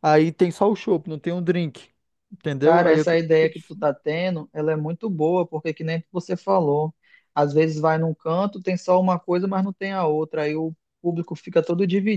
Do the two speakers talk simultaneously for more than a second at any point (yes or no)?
no